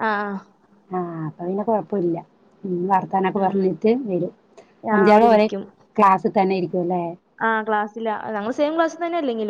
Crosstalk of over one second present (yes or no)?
no